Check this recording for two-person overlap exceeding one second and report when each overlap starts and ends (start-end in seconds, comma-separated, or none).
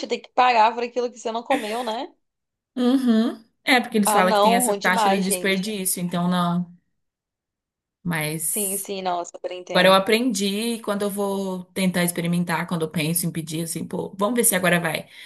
4.0-5.6